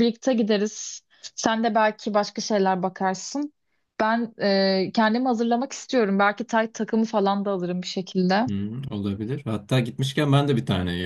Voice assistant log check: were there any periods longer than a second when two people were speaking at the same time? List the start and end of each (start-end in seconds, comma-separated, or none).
none